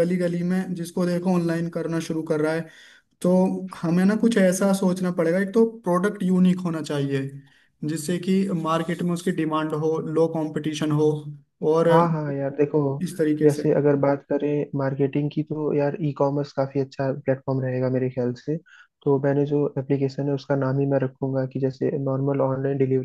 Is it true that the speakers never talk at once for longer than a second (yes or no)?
yes